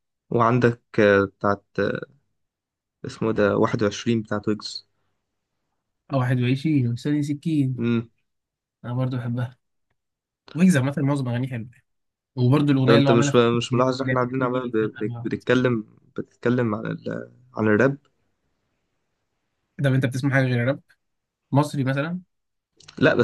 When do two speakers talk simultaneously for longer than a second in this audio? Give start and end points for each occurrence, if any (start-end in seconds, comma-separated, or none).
12.9-15.3